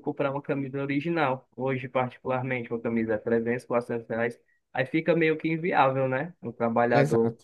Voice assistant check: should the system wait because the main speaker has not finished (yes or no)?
yes